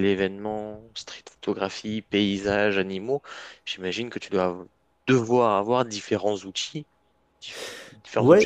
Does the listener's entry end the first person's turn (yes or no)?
yes